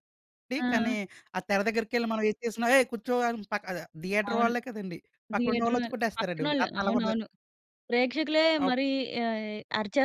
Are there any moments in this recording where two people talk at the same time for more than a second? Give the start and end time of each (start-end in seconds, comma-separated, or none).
5.4-7.1